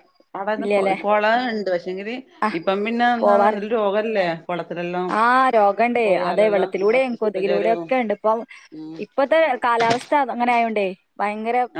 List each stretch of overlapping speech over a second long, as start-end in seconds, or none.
6.0-7.9